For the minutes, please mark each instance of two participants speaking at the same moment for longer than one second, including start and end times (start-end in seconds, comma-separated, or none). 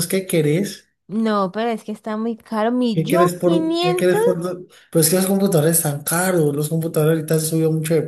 2.9-4.2